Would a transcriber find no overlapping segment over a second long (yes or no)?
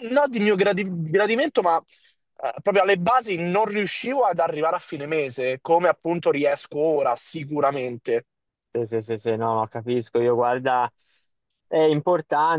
yes